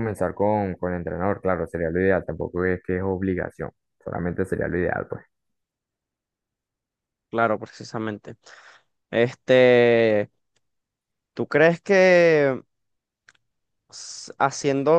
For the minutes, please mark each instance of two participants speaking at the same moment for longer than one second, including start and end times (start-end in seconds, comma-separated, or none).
none